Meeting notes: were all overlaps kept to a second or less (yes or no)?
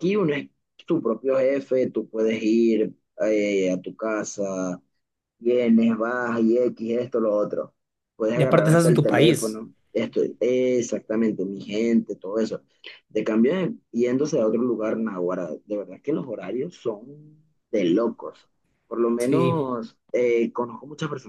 no